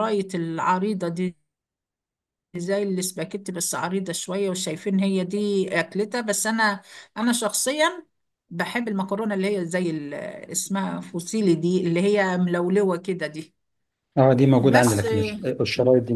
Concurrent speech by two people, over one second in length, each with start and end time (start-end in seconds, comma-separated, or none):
none